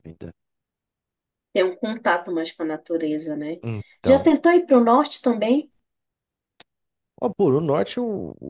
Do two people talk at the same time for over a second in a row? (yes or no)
no